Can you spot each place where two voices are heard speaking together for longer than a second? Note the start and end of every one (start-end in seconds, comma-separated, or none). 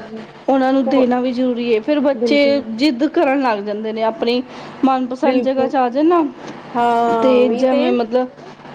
none